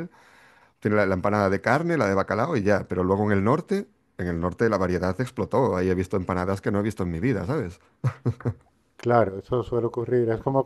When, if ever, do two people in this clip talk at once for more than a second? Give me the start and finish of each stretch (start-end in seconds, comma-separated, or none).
none